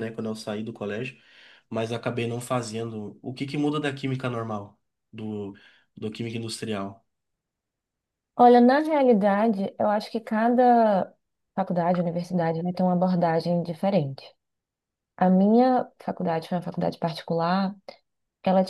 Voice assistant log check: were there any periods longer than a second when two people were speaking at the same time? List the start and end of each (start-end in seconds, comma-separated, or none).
none